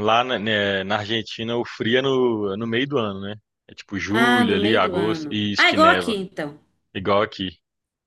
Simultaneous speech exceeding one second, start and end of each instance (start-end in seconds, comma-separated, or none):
4.1-6.1